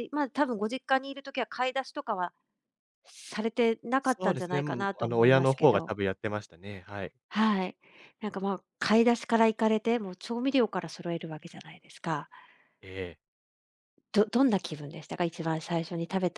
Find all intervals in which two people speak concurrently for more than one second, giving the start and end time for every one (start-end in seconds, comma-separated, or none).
4.0-5.9